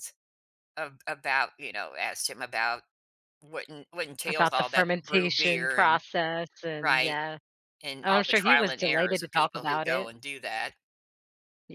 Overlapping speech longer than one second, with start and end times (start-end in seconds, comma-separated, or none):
4.2-6.0, 8.0-10.1